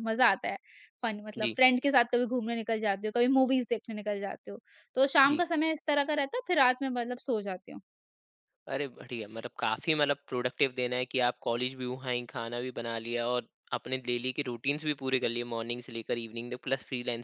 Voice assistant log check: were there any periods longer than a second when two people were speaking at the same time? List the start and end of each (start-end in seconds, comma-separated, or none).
none